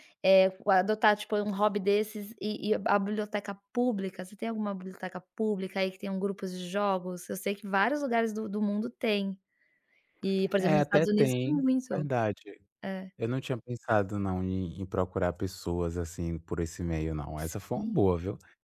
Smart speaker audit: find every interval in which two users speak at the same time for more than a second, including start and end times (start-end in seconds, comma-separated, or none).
10.6-12.1